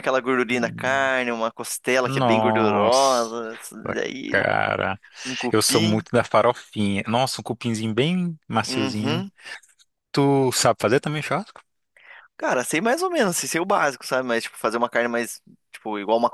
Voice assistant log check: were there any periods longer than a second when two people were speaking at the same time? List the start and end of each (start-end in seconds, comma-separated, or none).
2.0-3.3